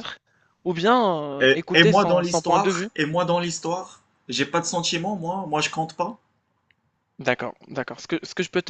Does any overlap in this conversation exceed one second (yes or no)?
yes